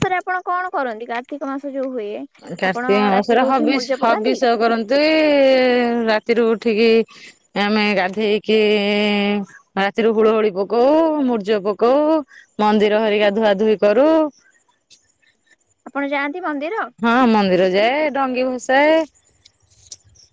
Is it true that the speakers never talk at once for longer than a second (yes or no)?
no